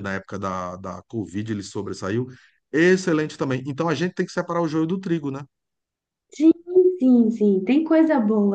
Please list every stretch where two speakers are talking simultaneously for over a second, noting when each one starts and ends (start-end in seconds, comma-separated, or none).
none